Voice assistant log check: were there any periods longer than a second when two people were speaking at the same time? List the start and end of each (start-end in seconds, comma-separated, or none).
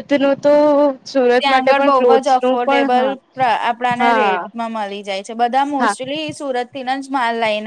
1.4-3.1